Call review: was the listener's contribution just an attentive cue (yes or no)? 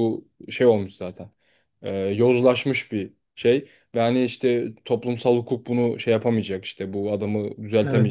yes